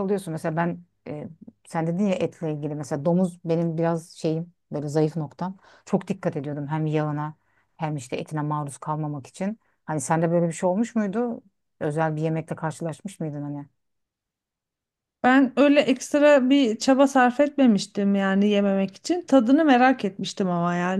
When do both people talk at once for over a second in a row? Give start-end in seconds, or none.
none